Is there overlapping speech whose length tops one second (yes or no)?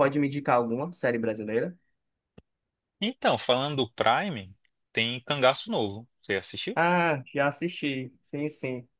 no